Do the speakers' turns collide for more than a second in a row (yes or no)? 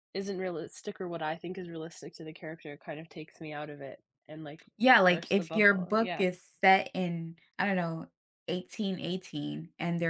yes